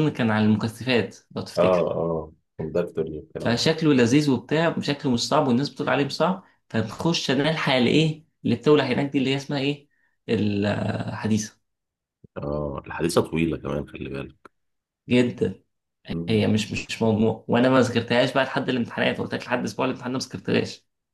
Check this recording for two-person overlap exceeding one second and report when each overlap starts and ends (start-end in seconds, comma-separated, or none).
none